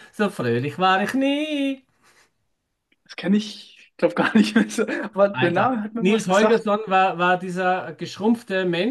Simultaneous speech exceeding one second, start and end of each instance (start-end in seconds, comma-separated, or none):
5.3-6.7